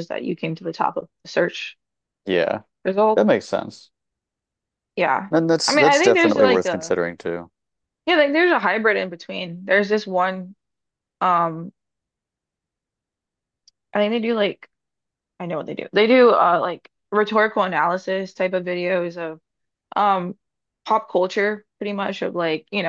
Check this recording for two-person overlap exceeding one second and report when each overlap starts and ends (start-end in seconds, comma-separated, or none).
5.7-7.0